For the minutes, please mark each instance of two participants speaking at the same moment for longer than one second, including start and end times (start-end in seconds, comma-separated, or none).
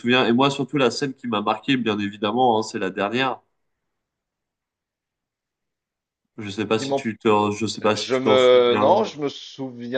7.9-9.1